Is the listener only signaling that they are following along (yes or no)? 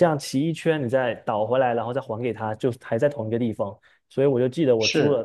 yes